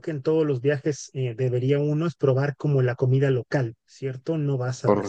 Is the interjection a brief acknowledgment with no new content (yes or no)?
yes